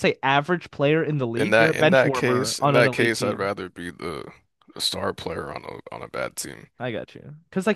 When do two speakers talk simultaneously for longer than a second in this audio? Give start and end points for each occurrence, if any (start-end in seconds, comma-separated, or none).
1.4-3.5